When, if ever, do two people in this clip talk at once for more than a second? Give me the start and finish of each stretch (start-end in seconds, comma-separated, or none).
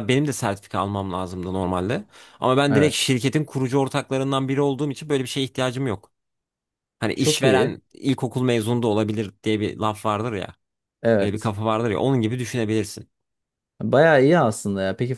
none